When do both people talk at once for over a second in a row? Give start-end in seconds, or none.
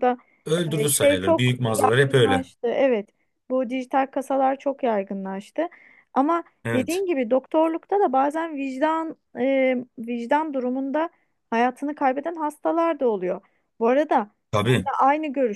0.8-2.4